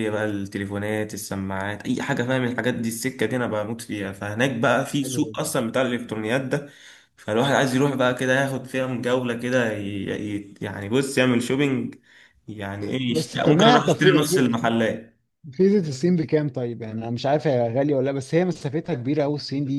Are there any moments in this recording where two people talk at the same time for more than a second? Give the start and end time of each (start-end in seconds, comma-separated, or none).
13.1-14.7